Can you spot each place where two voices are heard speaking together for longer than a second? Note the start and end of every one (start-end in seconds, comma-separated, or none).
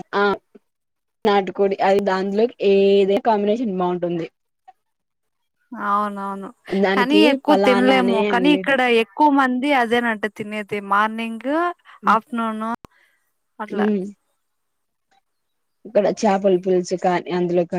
6.9-8.8